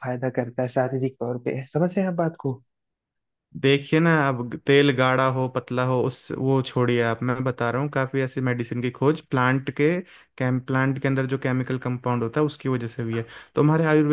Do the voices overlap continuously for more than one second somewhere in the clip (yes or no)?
no